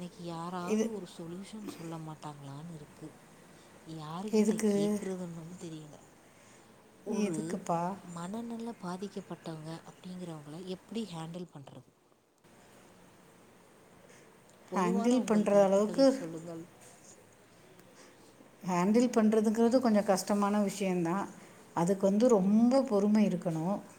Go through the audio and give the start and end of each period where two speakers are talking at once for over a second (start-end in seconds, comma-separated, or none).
14.8-16.0